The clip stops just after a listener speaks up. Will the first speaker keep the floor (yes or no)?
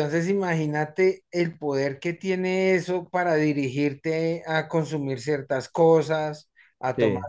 yes